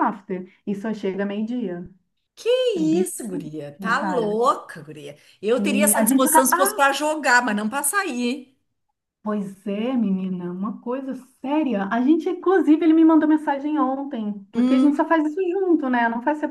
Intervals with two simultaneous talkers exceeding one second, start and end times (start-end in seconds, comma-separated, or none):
5.6-6.9